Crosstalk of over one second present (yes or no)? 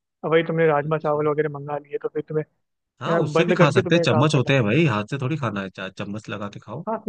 yes